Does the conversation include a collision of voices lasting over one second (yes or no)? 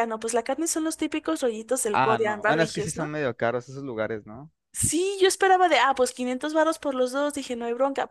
yes